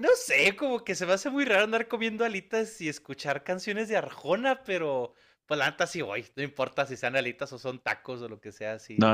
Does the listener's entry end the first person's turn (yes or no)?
yes